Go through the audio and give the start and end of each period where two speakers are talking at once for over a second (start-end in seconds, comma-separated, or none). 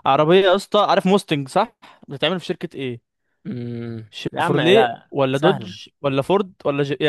4.1-5.8